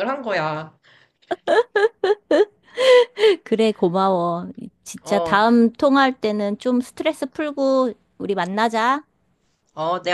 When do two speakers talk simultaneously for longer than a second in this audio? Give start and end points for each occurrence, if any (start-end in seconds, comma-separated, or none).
none